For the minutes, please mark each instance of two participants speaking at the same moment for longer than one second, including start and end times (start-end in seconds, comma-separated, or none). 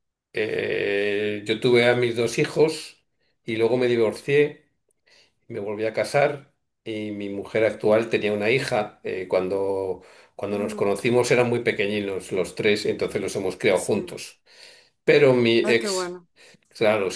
none